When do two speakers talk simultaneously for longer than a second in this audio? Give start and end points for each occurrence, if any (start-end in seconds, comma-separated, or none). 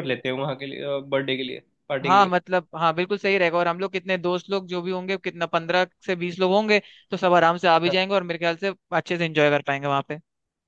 none